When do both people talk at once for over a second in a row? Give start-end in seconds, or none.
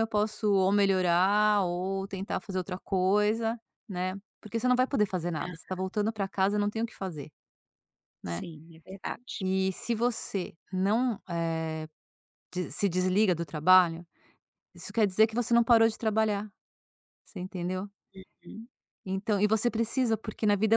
none